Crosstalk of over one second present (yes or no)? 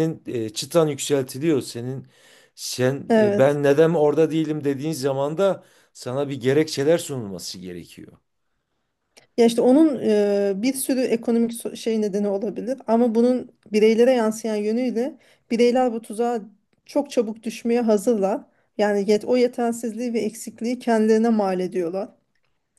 no